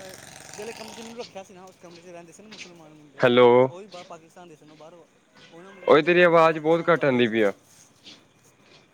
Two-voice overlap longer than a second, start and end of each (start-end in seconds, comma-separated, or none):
5.9-7.5